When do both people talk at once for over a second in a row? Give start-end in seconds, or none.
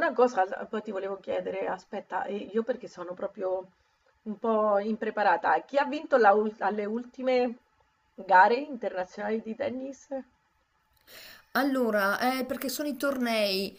none